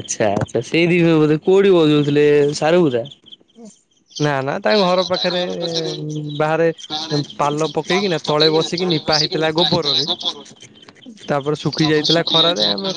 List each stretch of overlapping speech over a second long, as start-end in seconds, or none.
none